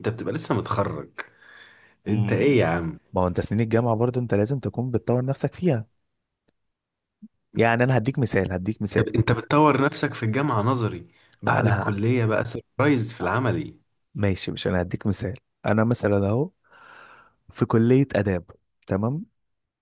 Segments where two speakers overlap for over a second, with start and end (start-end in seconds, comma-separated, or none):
none